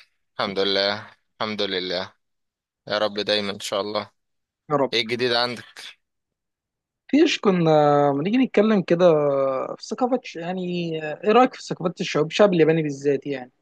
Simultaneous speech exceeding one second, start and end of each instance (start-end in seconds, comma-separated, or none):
none